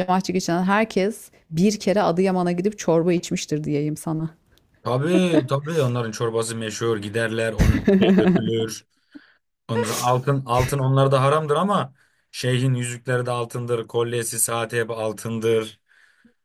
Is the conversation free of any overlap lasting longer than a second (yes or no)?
yes